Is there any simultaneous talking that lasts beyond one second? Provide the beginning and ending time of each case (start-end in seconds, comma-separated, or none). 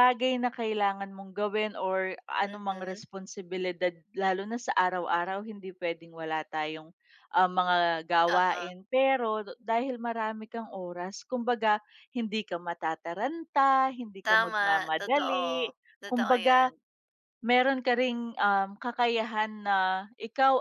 14.3-16.7